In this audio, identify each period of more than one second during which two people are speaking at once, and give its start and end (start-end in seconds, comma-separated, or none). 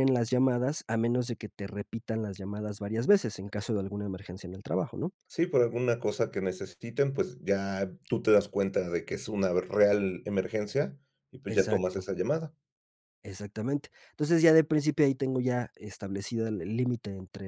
none